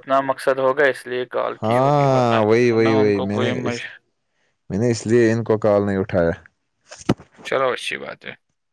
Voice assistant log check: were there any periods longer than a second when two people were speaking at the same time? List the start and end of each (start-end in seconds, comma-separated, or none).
1.6-3.8